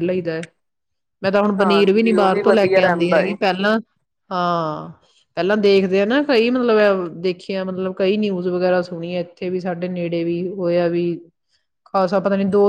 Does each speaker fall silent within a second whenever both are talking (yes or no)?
no